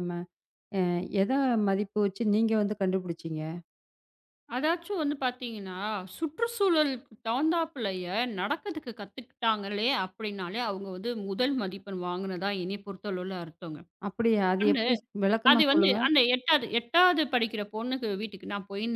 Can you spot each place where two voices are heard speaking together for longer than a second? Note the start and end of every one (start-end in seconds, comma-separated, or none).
none